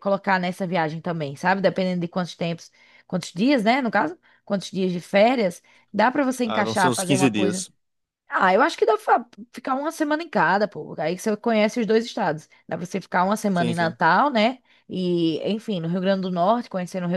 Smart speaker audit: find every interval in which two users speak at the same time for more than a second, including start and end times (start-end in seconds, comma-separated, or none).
6.4-7.7